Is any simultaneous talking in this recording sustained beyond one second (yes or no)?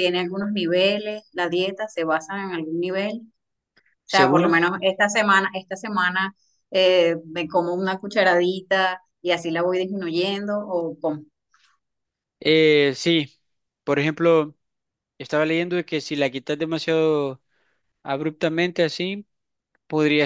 no